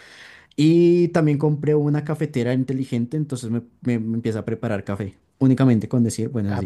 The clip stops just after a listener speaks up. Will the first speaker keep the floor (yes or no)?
no